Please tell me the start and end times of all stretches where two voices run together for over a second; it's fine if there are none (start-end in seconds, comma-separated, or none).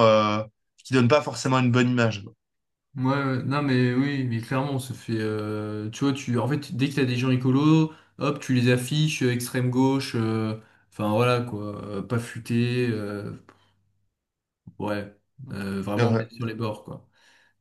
none